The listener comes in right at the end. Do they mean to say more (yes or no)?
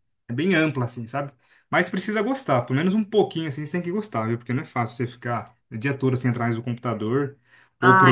no